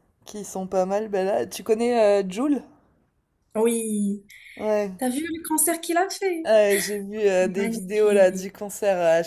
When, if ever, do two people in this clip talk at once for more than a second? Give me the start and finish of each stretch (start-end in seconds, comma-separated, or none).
7.2-8.5